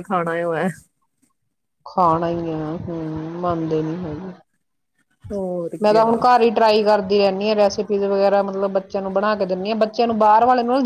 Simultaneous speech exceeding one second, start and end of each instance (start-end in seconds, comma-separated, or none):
none